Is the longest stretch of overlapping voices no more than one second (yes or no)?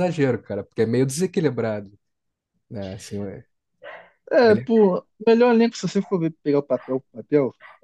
yes